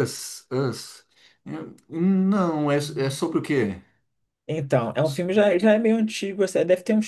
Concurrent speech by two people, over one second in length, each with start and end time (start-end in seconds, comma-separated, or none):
none